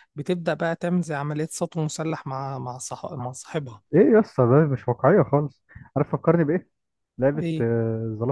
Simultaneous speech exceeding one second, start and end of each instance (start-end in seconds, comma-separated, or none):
none